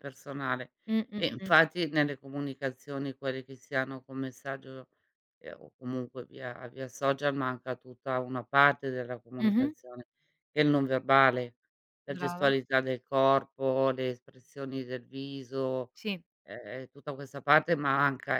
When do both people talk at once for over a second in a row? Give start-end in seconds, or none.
none